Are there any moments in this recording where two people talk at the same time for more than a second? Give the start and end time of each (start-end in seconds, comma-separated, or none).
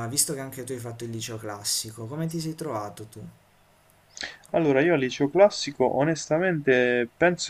none